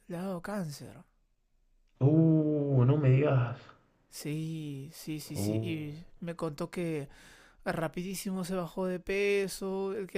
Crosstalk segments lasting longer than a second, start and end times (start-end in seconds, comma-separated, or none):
none